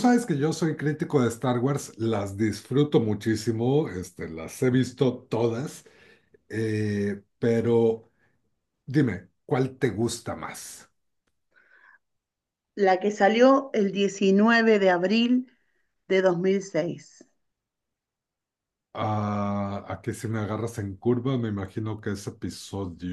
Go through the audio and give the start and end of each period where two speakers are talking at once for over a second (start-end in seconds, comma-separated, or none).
none